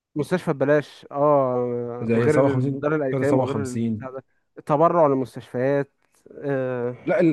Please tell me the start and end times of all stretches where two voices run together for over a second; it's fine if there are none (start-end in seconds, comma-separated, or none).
2.0-4.0